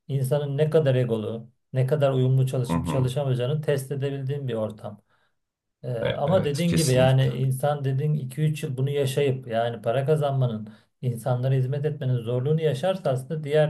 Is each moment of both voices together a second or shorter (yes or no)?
no